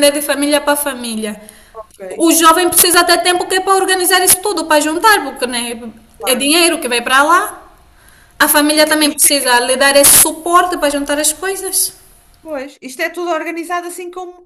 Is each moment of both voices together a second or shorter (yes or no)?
yes